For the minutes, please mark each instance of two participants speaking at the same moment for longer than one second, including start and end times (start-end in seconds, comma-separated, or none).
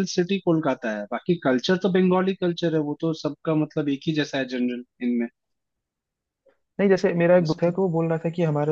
none